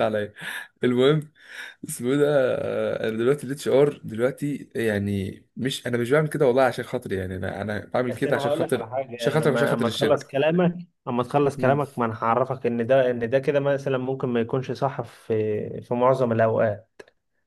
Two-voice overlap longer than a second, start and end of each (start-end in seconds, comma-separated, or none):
8.1-10.3